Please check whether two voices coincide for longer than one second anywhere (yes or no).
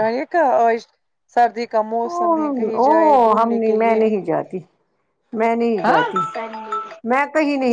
yes